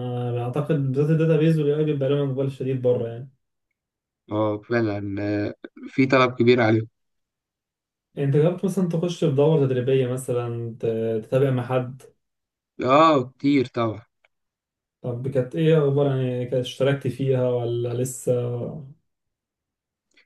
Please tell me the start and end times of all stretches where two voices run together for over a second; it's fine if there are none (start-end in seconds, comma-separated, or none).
none